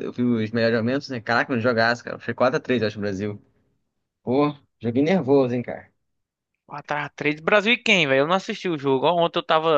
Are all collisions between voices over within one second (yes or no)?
yes